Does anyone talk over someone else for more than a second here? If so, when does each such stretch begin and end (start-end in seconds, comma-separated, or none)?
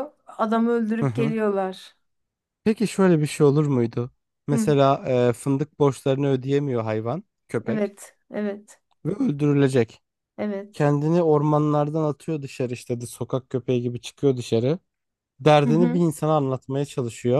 none